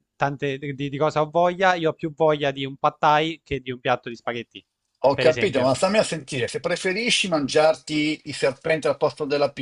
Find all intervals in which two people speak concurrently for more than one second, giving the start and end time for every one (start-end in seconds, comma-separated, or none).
none